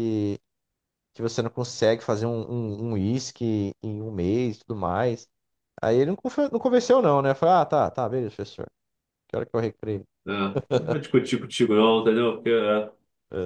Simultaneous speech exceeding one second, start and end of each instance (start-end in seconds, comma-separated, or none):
none